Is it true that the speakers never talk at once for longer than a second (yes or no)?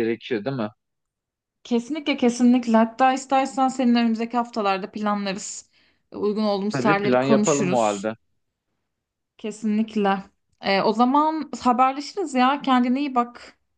no